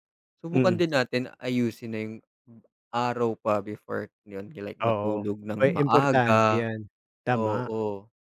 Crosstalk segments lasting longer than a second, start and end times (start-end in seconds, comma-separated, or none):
4.8-6.6